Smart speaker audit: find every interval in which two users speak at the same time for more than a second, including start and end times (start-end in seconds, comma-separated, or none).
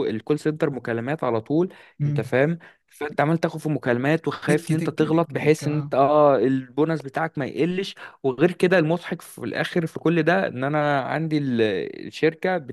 4.5-5.9